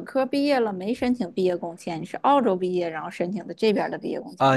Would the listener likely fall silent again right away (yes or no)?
no